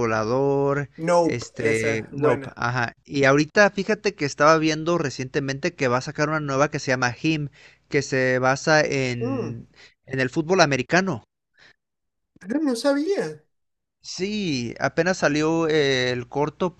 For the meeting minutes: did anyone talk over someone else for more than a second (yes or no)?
yes